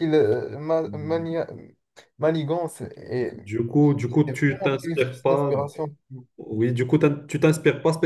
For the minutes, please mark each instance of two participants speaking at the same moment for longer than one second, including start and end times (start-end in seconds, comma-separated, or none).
4.3-5.5